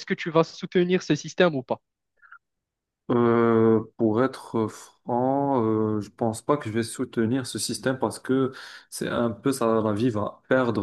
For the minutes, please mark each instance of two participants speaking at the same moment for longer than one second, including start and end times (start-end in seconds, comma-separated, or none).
none